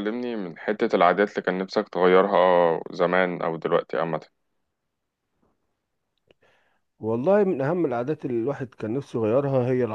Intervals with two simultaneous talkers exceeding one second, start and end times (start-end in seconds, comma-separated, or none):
none